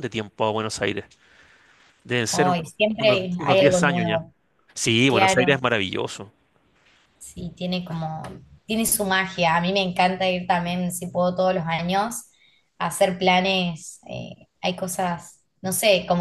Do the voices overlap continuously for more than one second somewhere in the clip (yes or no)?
yes